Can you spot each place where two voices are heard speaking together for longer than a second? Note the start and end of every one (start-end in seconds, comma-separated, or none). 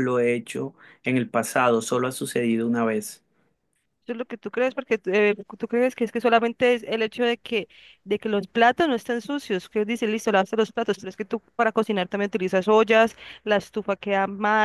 none